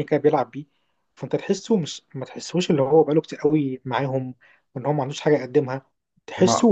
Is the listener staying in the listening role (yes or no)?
yes